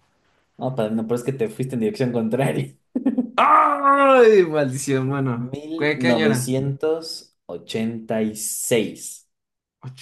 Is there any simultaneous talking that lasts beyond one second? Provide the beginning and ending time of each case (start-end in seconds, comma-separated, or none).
5.3-6.6